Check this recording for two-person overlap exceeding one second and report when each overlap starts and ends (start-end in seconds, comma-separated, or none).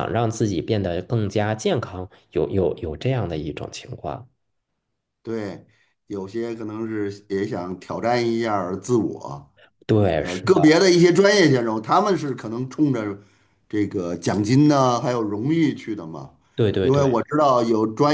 none